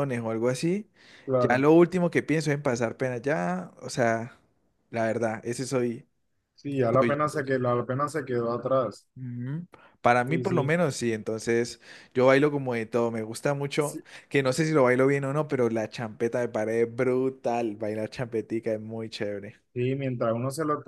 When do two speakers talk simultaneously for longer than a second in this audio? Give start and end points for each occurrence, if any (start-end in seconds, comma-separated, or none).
none